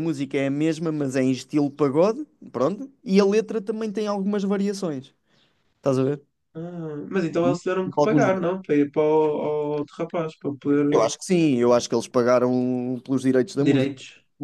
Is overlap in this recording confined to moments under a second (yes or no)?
yes